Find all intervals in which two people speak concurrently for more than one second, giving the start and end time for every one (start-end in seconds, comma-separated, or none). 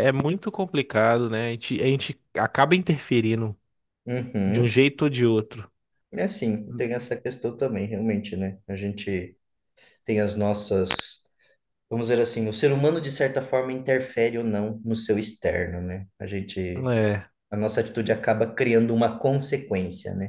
none